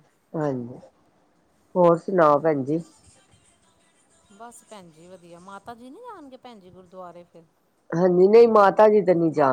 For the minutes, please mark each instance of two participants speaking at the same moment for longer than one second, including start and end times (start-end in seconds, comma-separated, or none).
none